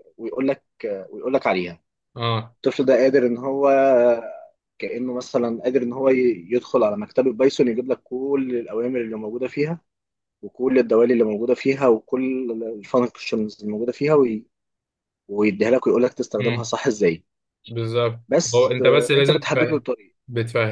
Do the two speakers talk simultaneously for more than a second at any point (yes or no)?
yes